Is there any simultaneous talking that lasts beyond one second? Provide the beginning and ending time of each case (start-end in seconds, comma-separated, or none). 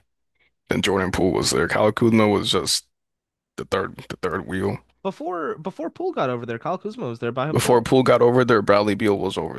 none